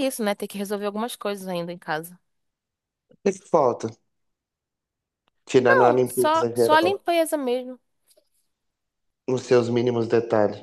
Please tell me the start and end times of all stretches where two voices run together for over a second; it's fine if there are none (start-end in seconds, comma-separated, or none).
5.7-7.0